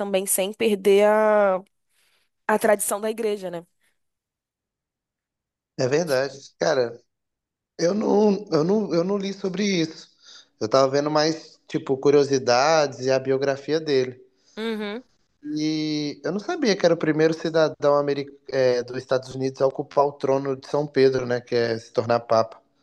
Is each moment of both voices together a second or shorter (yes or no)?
yes